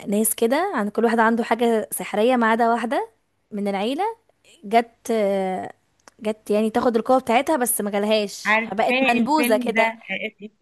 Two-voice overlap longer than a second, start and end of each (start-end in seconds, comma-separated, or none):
8.4-9.9